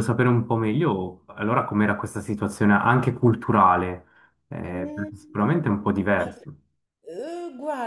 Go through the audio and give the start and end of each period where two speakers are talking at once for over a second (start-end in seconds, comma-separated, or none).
4.7-6.3